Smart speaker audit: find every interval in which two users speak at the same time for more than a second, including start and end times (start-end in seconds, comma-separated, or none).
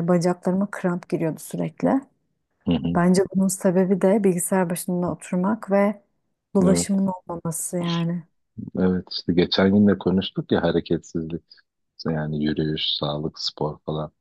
none